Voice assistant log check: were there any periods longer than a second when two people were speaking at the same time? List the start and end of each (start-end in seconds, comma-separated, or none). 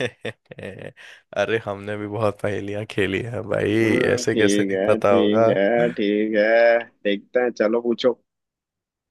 3.8-5.5